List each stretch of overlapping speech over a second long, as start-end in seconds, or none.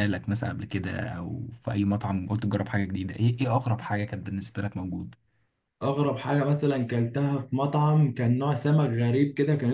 none